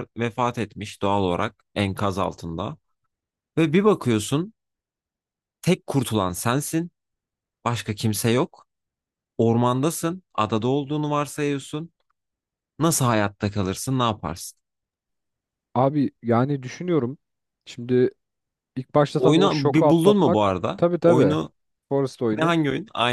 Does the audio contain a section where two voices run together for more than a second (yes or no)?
yes